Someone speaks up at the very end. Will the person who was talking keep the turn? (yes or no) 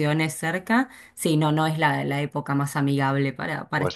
no